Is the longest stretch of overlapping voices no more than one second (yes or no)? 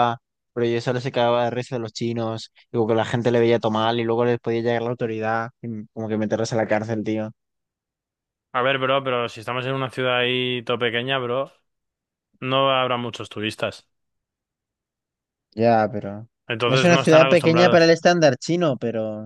no